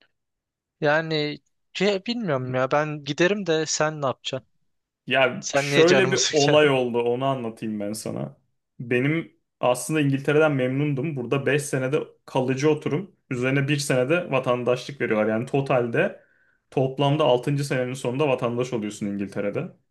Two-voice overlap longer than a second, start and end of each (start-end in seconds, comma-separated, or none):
5.4-6.7